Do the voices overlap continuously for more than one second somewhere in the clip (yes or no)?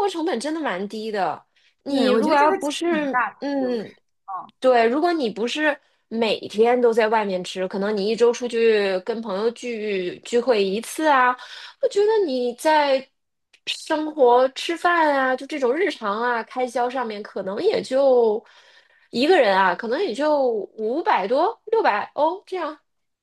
yes